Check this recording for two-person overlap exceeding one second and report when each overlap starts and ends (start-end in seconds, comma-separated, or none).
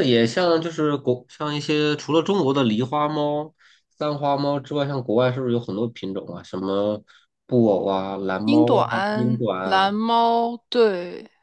8.4-9.9